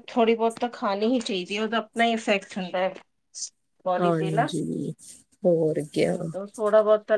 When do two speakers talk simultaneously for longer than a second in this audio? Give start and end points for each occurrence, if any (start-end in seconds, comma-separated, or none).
none